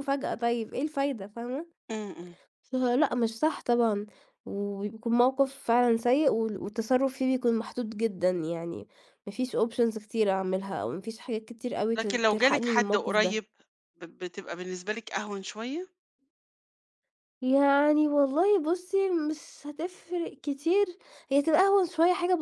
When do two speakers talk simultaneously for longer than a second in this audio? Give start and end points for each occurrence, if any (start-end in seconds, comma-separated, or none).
12.0-13.4